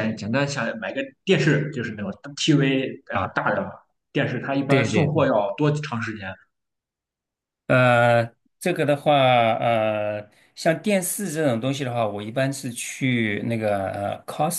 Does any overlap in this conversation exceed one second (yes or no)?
no